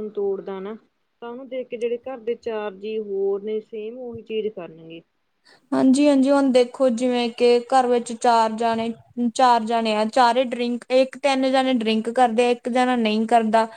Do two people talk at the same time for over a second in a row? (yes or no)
no